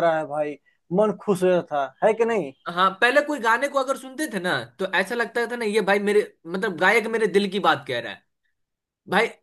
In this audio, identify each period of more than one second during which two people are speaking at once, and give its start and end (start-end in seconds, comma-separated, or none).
none